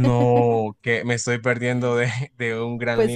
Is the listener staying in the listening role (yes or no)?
no